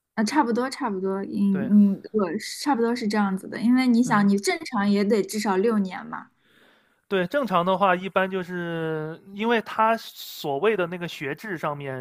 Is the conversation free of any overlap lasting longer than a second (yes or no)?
yes